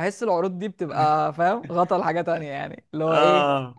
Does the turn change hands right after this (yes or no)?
no